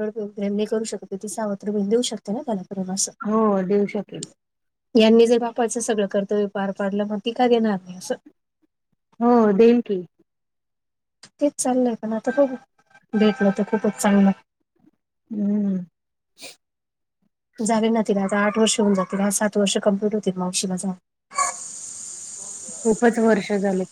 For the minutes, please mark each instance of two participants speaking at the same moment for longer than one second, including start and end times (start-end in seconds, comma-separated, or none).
none